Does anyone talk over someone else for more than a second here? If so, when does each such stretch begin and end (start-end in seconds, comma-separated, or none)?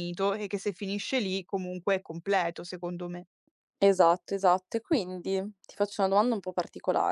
none